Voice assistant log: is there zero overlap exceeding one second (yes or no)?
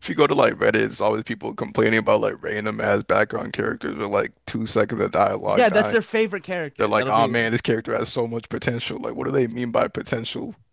yes